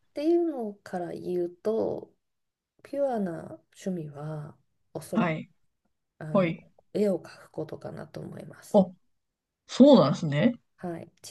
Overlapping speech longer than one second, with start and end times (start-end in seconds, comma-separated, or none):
none